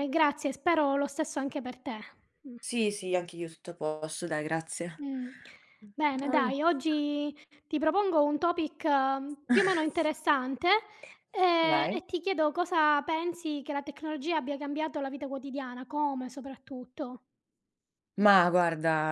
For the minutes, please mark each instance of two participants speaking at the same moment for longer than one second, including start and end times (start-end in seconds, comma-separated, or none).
none